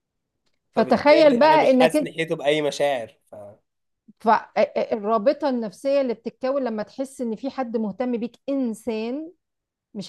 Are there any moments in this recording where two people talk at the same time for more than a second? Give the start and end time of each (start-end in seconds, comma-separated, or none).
0.8-2.1